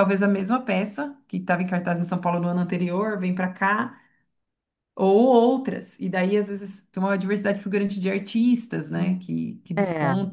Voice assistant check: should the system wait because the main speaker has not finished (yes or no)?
yes